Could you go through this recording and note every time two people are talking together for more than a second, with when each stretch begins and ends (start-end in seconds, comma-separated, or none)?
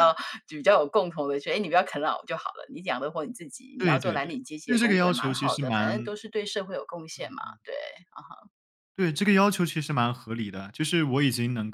3.8-6.1